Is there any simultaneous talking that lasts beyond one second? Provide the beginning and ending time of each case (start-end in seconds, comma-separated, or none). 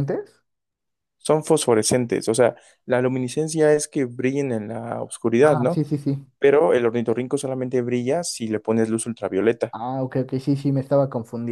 none